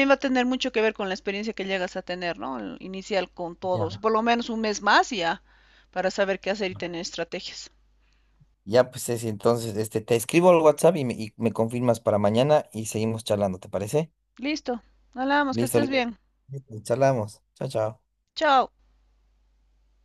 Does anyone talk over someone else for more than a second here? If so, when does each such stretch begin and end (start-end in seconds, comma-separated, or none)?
none